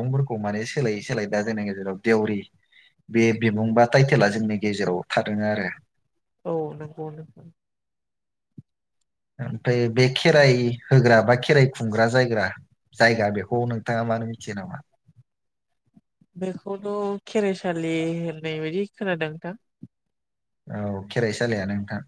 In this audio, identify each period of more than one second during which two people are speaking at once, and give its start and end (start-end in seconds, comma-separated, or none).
none